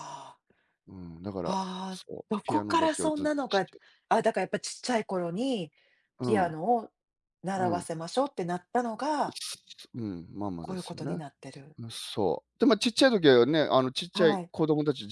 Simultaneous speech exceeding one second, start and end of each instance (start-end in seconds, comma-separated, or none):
1.4-3.7